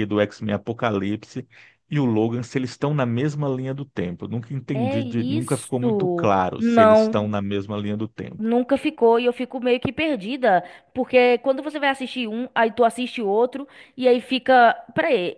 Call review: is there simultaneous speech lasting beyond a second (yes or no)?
yes